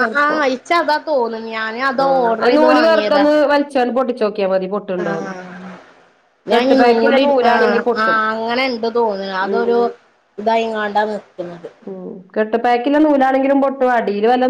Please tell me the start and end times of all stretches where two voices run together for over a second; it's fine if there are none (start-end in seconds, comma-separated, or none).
none